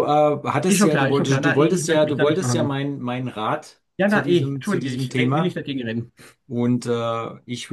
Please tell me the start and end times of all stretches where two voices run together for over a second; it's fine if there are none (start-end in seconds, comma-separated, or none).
0.7-2.8, 4.0-5.6